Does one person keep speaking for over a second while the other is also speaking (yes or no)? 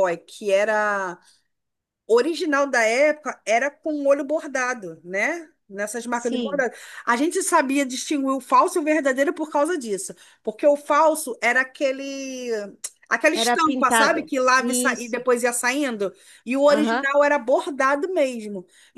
yes